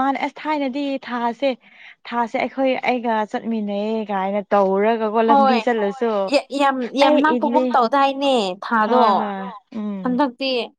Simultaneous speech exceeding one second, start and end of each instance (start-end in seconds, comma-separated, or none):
none